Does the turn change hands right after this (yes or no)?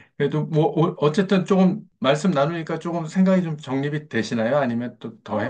yes